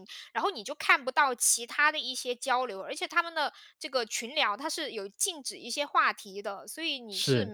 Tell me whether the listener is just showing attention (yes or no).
yes